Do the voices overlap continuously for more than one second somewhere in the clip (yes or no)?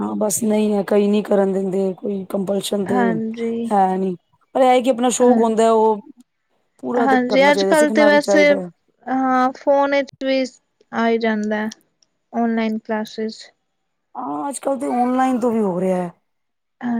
yes